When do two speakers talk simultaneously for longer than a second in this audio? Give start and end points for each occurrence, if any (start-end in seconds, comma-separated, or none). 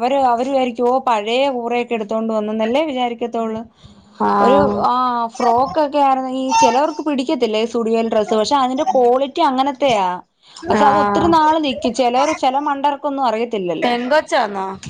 none